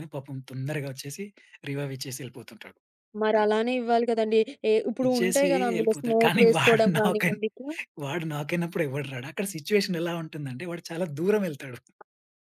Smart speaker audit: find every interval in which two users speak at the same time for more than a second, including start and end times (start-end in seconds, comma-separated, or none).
5.1-7.4